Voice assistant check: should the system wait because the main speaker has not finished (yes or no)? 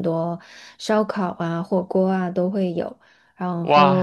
no